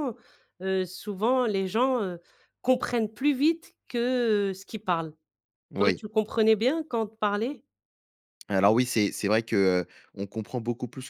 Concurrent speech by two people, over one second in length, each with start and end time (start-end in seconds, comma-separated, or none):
none